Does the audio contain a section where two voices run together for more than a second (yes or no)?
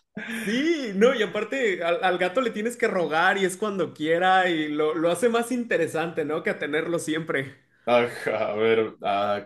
no